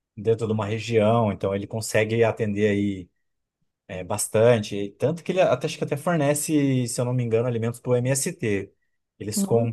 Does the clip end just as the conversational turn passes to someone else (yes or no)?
no